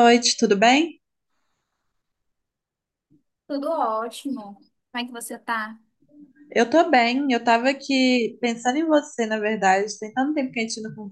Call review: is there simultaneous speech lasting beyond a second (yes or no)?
no